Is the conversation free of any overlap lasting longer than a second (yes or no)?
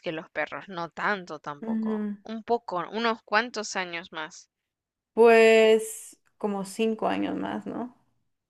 yes